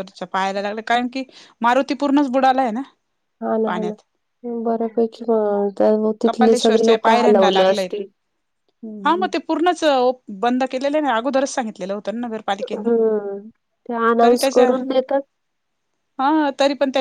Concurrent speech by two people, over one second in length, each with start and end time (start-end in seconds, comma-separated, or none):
6.2-7.9